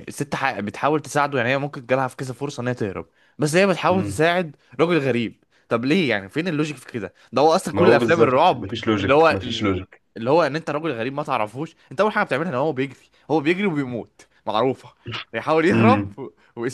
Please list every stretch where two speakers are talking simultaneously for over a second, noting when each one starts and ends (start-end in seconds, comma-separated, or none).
7.7-9.7